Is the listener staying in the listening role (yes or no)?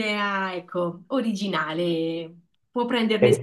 no